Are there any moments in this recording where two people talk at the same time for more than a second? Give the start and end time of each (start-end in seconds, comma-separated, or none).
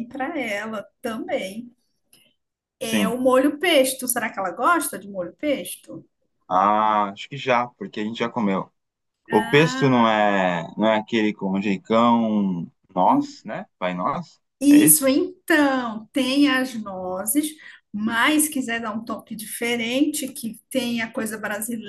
none